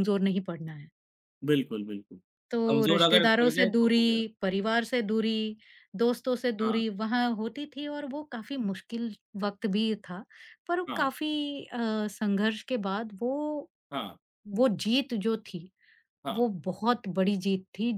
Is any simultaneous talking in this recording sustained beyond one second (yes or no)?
yes